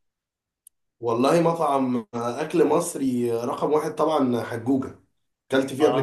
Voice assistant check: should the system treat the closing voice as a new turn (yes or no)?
yes